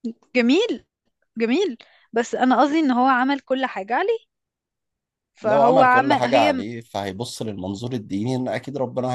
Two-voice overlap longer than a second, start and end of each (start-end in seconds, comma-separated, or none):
5.4-6.6